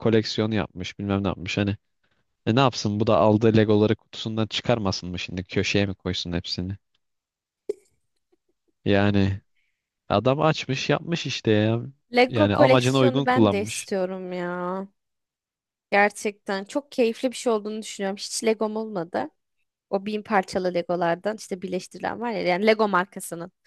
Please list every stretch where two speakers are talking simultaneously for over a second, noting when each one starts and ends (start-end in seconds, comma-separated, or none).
12.3-13.9